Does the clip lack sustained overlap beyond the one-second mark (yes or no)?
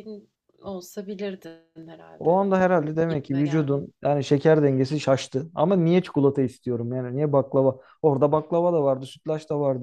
no